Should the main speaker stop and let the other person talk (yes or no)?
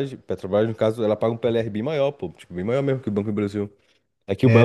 no